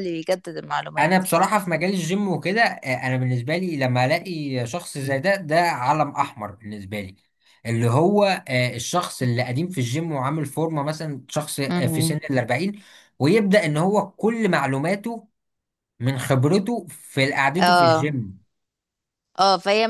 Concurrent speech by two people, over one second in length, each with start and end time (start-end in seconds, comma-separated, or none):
none